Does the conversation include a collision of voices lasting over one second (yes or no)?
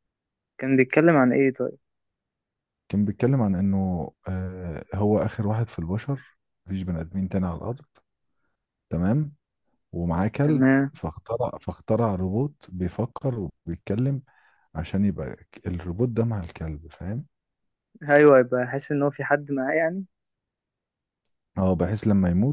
no